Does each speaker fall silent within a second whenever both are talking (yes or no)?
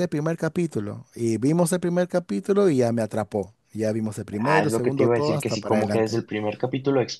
no